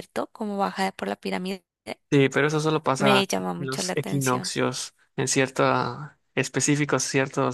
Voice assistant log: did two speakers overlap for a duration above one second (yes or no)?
yes